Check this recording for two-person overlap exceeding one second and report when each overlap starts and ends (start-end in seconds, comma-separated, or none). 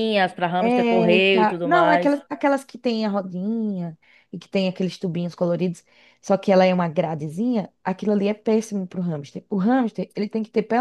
0.6-2.2